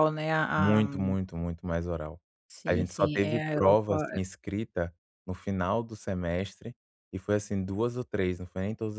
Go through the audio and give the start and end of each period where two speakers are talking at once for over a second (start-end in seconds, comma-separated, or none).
2.7-4.2